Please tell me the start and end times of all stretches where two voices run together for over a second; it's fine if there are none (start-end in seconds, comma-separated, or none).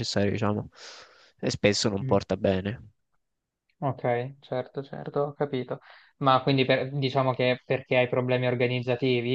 none